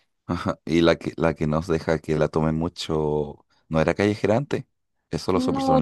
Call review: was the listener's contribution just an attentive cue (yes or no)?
no